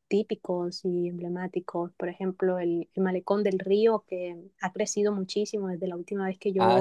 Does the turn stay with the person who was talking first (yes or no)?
no